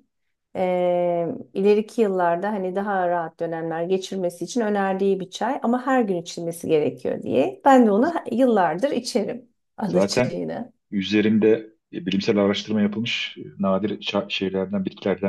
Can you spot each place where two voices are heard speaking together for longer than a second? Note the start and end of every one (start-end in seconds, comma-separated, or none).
none